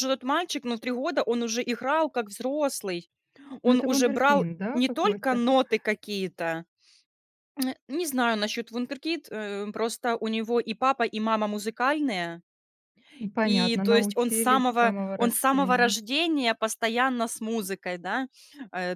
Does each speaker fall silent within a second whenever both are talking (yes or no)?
no